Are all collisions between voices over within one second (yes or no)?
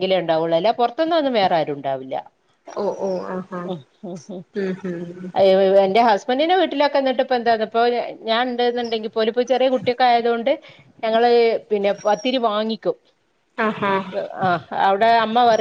yes